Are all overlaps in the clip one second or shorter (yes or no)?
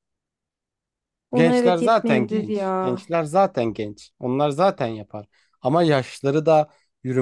no